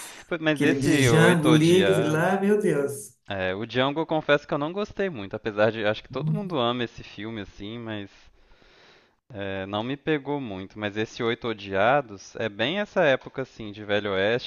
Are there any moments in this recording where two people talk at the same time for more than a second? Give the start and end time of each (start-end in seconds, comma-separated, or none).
0.6-2.3